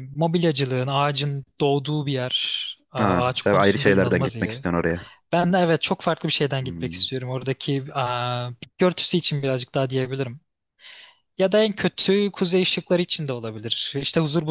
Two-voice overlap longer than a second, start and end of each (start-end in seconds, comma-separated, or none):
3.0-4.7